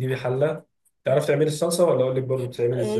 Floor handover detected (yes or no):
yes